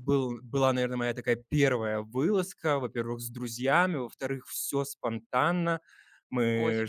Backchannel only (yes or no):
yes